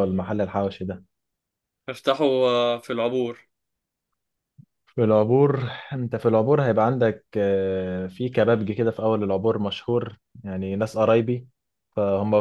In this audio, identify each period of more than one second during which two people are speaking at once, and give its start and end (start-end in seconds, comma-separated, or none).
none